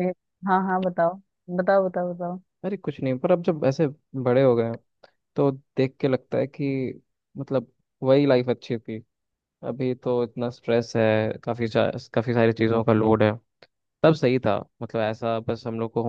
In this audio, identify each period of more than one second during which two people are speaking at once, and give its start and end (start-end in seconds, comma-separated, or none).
none